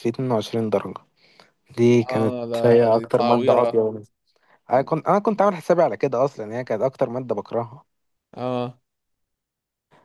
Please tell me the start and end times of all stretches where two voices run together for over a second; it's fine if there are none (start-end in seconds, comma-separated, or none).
1.9-3.9